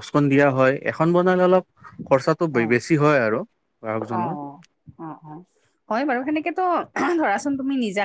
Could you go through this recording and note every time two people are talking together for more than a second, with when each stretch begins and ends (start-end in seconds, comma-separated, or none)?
none